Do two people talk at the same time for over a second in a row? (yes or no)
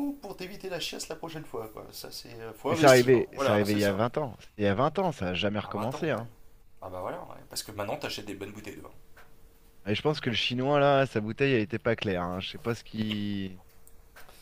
yes